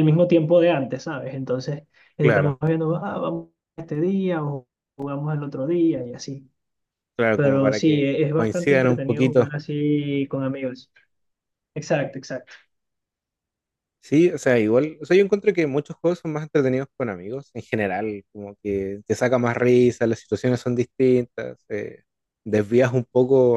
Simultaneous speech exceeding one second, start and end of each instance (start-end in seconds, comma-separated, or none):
7.3-9.5